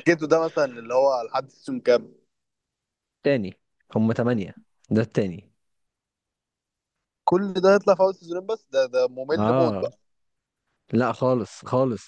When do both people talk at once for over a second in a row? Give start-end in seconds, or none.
none